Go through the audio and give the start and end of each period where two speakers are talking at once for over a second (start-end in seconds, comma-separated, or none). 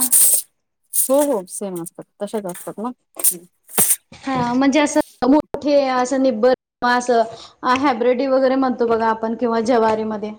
none